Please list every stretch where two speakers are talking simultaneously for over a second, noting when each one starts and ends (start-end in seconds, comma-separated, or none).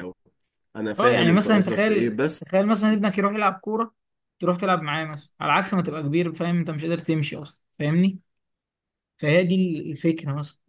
1.0-2.5